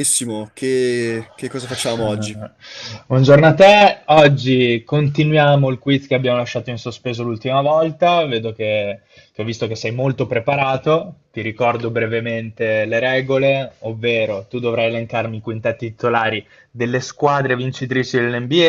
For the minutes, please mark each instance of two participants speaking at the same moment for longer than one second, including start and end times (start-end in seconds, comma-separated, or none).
none